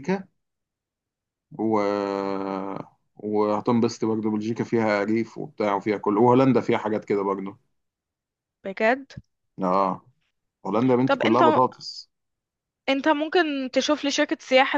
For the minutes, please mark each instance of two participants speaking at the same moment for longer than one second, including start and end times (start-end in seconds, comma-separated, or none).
none